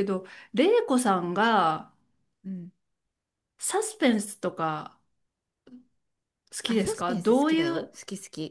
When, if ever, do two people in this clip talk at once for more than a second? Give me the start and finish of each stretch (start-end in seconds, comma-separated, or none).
6.7-7.9